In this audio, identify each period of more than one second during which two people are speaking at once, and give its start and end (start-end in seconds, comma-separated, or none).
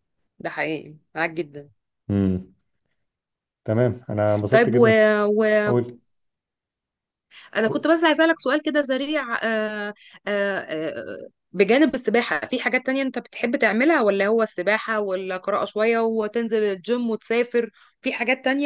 none